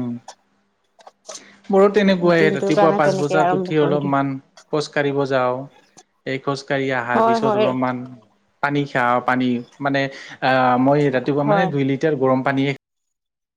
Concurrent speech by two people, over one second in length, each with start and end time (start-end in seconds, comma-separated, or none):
2.4-4.2